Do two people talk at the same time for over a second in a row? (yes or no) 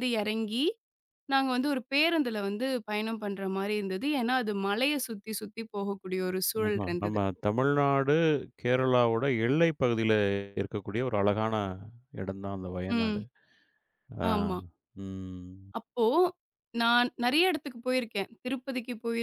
no